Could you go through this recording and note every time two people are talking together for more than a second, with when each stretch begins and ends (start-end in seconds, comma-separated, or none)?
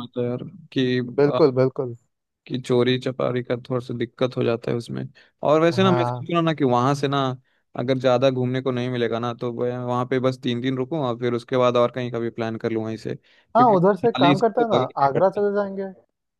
13.6-15.5